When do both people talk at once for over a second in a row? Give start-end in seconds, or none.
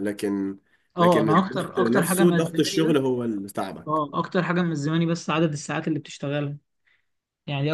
1.0-3.0